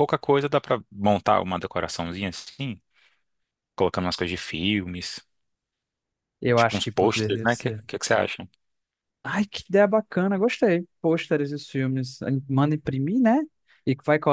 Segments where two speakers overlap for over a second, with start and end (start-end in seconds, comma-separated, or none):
6.5-7.8